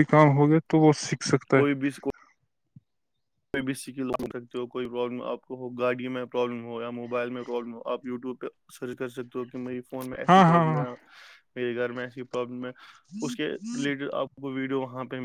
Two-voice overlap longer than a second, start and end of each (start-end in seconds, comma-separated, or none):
none